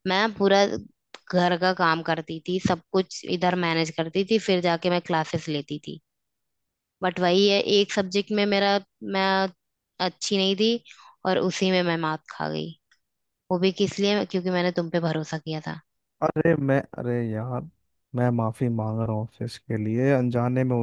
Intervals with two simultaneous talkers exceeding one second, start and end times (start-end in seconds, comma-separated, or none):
none